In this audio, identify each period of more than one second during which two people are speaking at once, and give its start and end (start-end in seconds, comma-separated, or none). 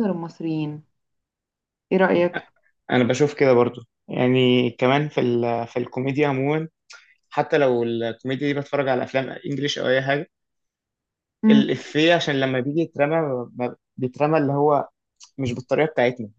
none